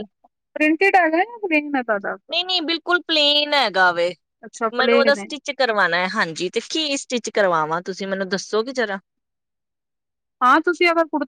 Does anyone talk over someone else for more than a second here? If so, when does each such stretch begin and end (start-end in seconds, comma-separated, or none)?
none